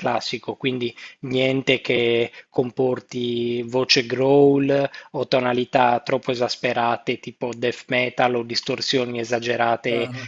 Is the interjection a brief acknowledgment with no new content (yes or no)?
yes